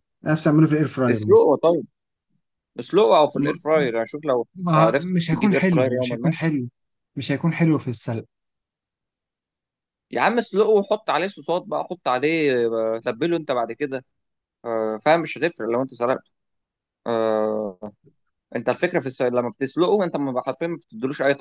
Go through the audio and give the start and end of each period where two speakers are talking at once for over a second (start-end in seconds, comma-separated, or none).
4.5-6.3